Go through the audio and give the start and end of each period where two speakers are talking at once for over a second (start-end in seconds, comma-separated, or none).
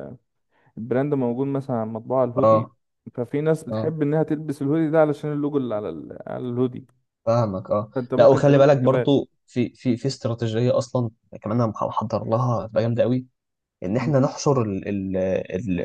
7.9-9.2